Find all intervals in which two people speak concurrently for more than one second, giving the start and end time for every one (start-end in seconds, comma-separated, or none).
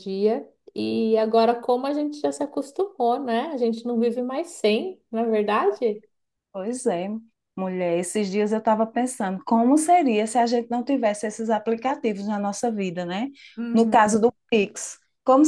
none